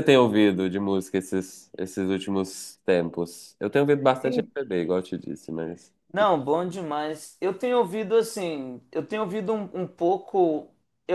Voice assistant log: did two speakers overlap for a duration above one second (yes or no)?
no